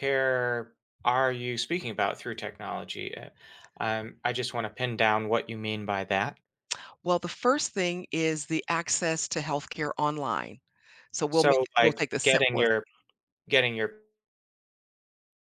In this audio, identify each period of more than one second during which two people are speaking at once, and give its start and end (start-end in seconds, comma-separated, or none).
11.3-12.7